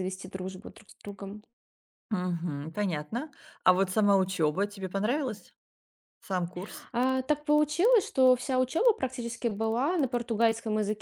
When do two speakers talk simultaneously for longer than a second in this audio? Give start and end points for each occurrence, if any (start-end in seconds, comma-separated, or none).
none